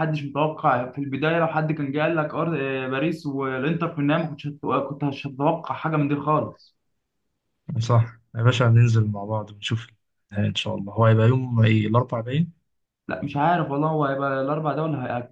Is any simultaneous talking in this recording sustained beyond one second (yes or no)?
no